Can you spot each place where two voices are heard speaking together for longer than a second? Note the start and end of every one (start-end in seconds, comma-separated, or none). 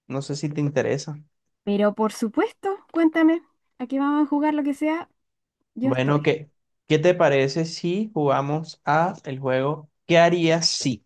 none